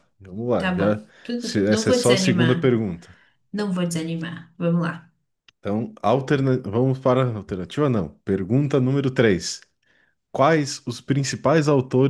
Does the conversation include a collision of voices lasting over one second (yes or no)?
yes